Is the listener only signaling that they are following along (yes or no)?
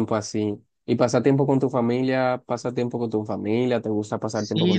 no